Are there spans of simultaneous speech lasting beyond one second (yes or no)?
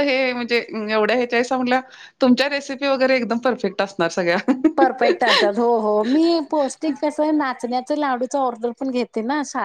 no